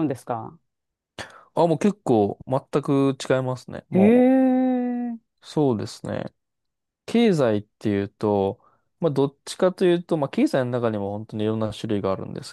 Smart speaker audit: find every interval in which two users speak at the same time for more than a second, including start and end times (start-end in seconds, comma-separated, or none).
none